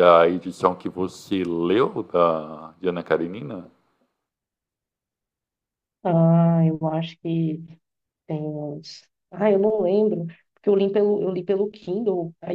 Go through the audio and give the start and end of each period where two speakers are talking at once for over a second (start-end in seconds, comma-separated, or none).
none